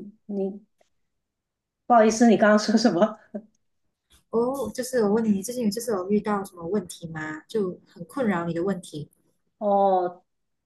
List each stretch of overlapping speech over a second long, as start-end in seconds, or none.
none